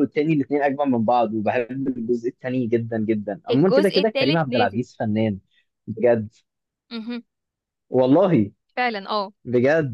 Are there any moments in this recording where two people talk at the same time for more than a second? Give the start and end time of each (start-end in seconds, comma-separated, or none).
3.5-4.8